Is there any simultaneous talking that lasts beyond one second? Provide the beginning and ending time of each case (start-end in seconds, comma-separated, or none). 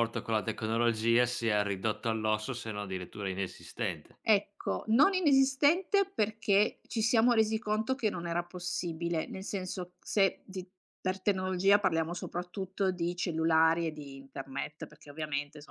none